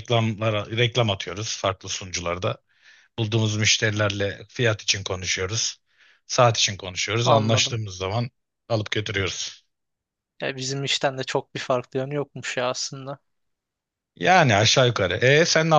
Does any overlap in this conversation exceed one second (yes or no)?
no